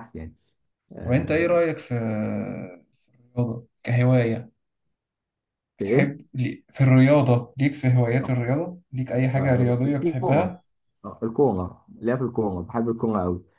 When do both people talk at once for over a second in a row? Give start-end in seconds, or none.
9.4-10.6